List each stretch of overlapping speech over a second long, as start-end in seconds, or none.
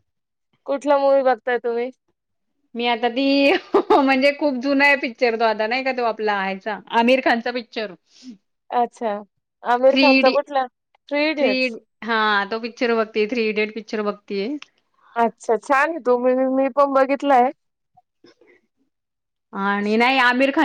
none